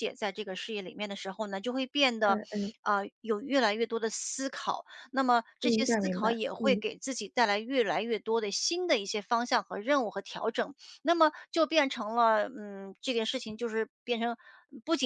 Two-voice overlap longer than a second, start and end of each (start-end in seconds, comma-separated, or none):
5.6-6.8